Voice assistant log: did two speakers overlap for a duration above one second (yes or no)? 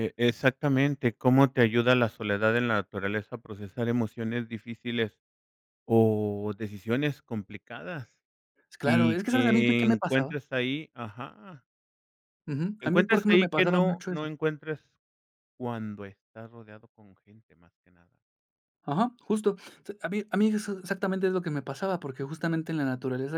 yes